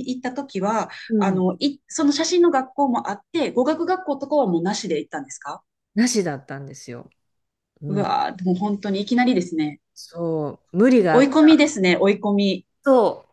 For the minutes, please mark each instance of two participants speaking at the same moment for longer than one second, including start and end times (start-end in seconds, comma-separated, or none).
none